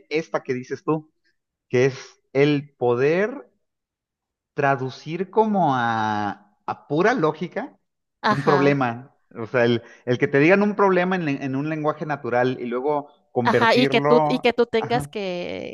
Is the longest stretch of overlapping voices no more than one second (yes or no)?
no